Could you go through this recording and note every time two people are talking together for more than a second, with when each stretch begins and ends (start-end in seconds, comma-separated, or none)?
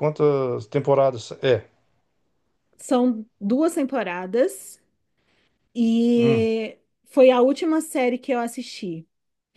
none